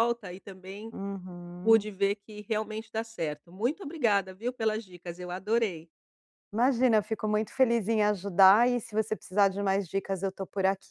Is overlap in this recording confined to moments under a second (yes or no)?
yes